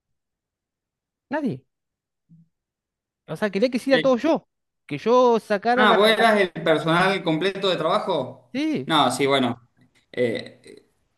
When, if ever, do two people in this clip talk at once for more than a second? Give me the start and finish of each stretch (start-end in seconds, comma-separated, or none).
none